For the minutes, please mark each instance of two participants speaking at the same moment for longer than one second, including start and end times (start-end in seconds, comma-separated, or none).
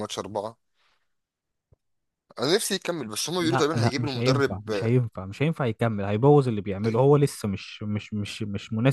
3.4-4.9